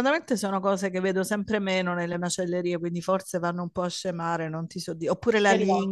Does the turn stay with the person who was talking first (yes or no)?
yes